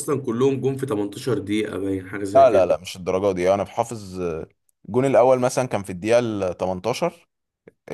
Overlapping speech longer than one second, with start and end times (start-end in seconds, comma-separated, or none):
none